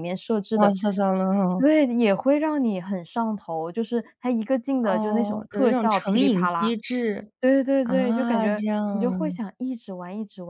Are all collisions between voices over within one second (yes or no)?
no